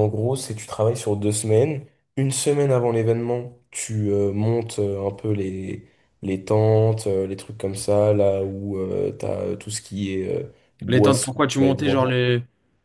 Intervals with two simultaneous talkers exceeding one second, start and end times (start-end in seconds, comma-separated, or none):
10.9-12.1